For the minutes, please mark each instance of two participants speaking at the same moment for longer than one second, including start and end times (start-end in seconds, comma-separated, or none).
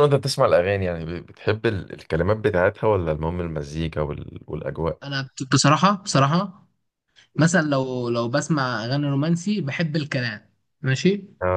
none